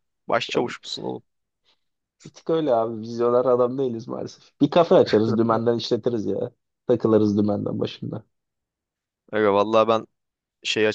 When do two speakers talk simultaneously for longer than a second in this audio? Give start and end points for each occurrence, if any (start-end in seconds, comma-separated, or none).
none